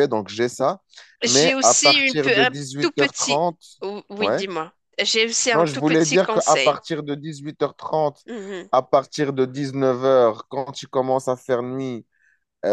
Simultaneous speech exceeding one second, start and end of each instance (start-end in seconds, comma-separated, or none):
1.2-3.5, 5.5-6.8